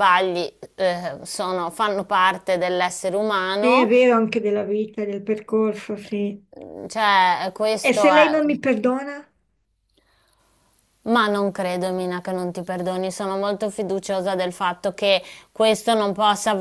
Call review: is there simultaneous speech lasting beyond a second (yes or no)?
no